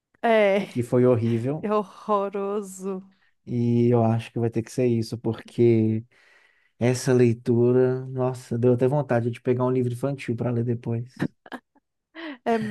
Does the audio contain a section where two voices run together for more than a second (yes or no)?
no